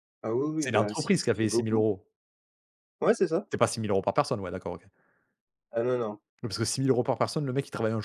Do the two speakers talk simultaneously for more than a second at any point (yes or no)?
yes